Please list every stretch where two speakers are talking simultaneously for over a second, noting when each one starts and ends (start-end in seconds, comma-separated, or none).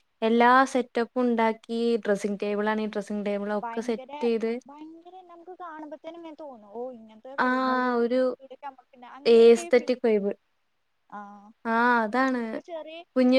none